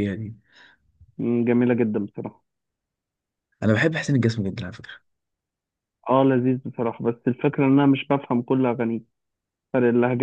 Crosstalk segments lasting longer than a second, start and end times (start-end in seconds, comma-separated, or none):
none